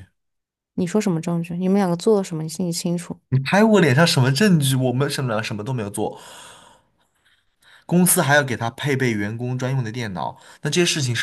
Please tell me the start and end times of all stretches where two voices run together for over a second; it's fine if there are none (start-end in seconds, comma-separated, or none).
none